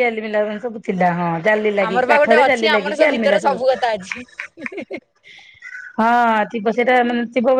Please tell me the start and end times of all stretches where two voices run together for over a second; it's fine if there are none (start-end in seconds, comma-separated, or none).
1.9-3.4